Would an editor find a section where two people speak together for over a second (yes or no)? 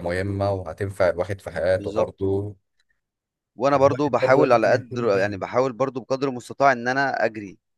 yes